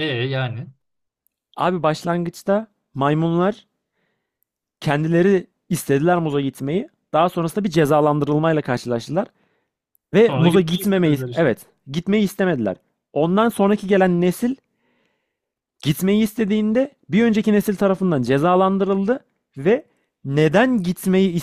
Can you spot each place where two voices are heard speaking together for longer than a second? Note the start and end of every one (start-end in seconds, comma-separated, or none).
10.3-11.5